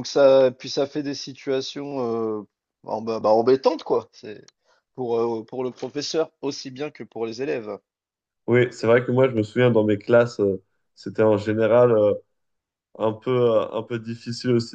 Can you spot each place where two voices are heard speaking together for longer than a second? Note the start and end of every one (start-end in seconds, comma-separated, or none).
none